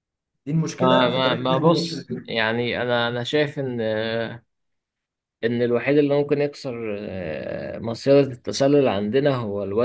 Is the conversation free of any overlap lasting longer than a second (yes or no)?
no